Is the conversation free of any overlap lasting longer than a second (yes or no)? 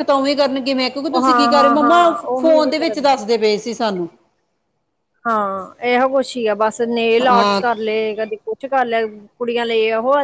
no